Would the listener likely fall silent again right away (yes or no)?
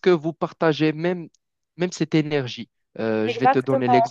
yes